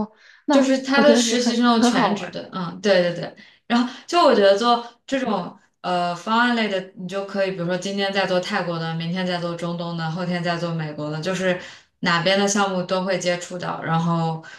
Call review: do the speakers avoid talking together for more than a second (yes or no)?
no